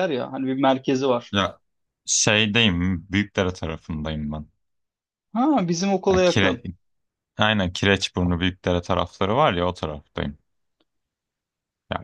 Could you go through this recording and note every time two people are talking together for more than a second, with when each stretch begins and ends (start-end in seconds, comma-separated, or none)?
none